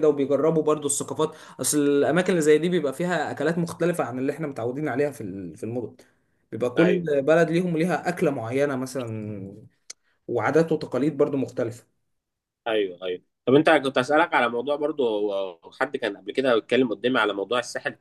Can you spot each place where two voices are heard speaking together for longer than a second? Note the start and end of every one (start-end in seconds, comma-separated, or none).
none